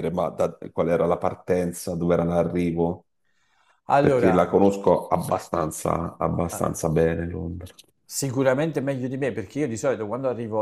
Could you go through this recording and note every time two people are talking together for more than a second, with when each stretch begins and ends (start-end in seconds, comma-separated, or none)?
none